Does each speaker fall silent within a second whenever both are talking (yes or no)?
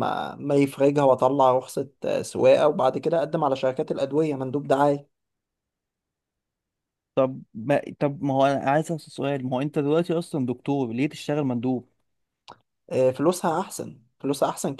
yes